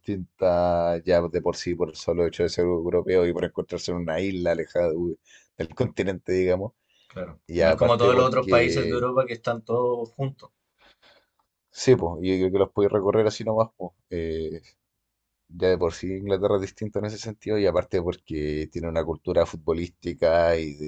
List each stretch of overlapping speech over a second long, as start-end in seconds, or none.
7.5-9.1